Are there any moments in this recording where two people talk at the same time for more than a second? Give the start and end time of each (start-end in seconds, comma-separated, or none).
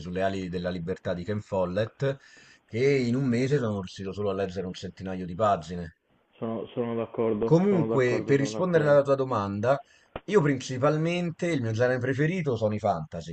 7.4-9.0